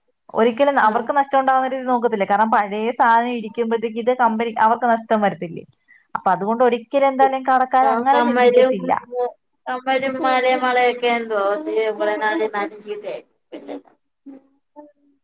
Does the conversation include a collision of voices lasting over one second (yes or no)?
no